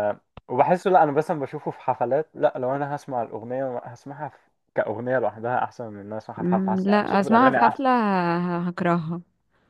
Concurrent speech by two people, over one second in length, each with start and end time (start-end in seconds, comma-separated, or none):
6.4-7.8